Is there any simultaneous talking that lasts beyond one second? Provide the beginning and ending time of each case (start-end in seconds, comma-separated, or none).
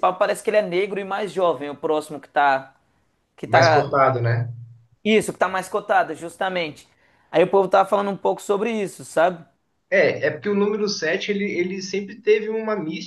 none